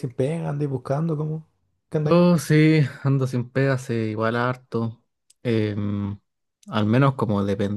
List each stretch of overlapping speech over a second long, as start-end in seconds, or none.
none